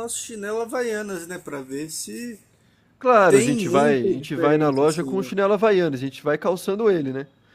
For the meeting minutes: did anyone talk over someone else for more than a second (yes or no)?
yes